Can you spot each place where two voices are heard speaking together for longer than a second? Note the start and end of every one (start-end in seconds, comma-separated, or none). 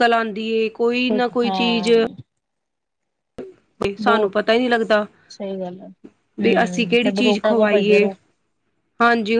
6.4-8.1